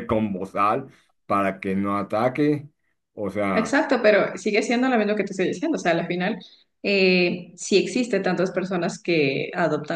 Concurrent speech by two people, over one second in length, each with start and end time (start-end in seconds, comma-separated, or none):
none